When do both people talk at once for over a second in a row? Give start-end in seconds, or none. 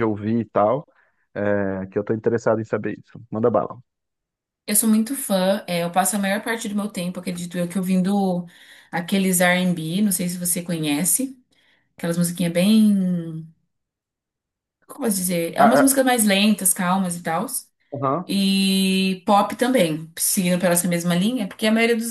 none